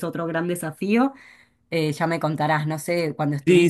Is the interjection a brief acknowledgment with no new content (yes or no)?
no